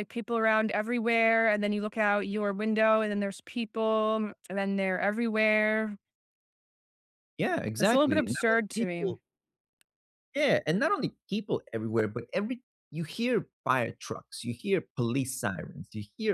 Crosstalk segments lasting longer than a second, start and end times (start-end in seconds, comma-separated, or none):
7.8-9.1